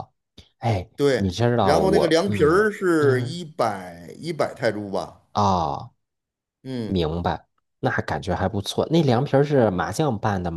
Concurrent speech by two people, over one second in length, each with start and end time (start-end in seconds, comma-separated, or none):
0.9-3.4